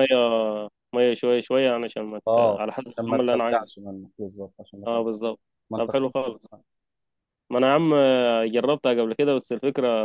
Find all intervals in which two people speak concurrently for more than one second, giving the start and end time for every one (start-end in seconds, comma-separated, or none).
2.3-3.7